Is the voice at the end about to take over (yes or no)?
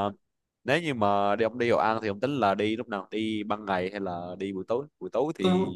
no